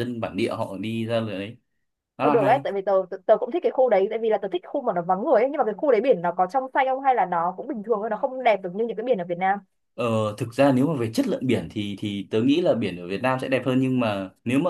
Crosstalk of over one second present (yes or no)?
no